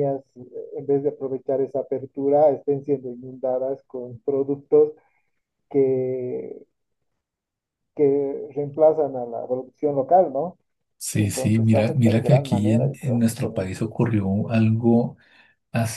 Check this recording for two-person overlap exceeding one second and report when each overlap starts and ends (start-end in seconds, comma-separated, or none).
11.2-13.7